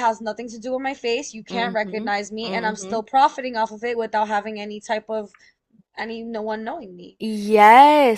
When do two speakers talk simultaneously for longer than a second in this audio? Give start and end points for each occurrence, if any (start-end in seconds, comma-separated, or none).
1.5-3.0